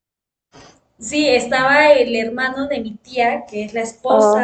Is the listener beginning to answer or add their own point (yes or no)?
no